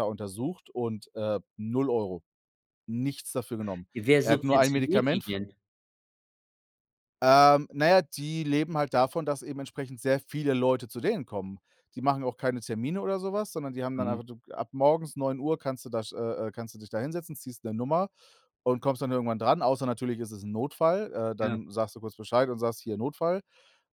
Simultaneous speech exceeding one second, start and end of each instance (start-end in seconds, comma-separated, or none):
3.9-5.4